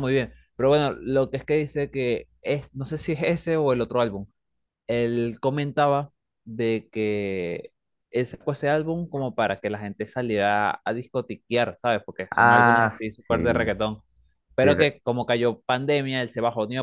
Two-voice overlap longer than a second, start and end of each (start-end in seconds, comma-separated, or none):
12.3-13.7